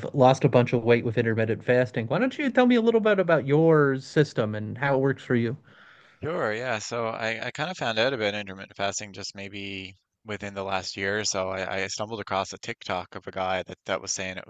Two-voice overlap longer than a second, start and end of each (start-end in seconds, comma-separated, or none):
none